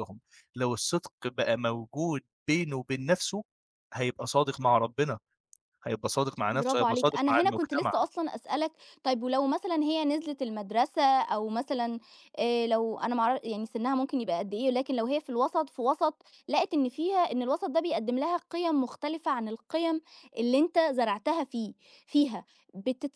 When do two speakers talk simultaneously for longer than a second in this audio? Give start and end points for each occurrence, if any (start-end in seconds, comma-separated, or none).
6.5-7.9